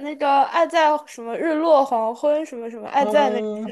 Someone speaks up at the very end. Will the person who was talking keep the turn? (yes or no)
no